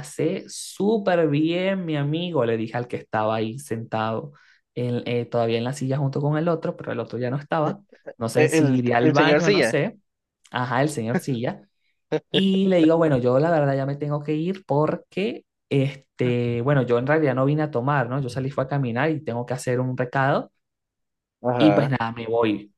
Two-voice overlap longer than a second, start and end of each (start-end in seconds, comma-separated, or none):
8.3-9.8